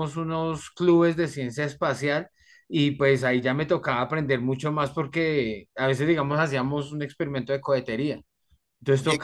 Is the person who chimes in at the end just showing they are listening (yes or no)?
yes